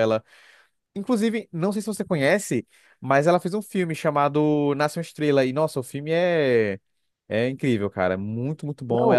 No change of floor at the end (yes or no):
no